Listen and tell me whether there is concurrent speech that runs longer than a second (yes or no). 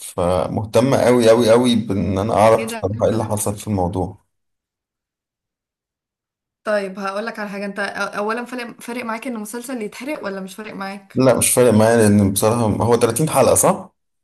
no